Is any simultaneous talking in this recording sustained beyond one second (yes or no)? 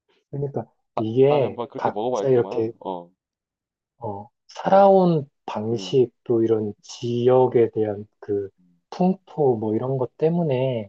yes